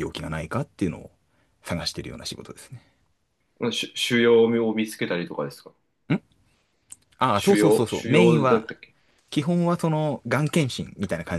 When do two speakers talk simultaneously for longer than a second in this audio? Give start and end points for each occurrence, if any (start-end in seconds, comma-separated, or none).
7.3-8.7